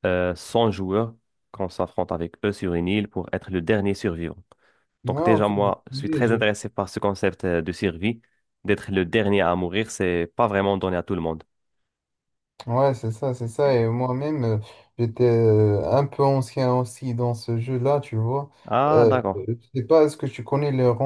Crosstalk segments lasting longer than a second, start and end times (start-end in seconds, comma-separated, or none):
5.0-6.4